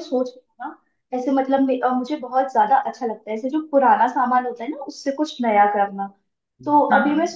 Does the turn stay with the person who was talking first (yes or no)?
yes